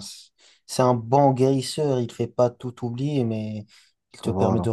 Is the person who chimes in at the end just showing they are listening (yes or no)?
yes